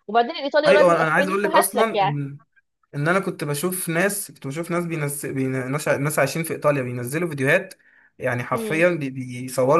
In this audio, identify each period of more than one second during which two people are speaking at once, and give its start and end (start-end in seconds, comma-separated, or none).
0.7-2.2